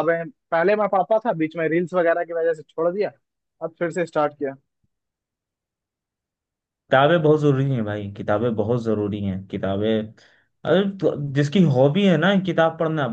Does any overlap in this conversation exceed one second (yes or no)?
no